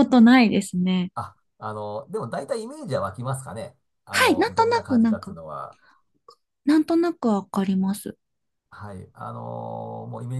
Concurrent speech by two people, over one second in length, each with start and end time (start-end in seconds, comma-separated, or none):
4.1-5.4